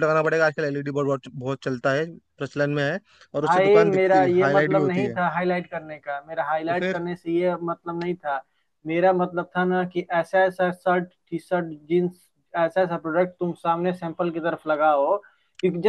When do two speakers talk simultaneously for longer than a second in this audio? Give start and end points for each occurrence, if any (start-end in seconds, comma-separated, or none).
3.4-5.2